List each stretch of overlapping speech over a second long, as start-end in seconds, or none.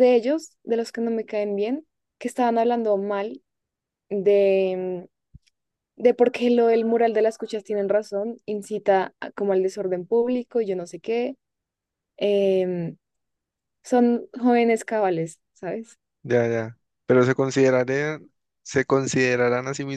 none